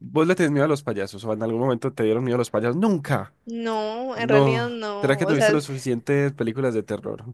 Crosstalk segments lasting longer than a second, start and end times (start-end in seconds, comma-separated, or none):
4.1-5.7